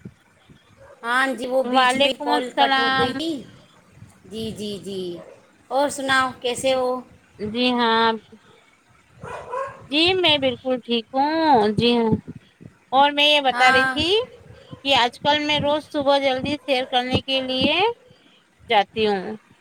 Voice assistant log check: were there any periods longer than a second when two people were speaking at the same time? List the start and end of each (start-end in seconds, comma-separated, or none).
1.8-3.1